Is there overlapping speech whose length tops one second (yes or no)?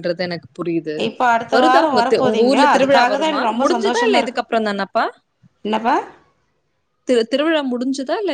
yes